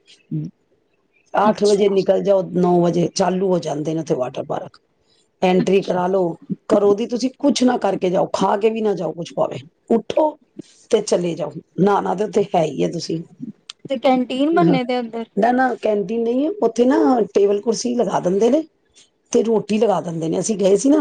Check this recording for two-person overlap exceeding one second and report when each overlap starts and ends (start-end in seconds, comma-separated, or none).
none